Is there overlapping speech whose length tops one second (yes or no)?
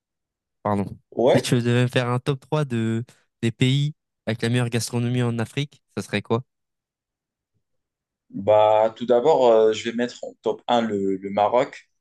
no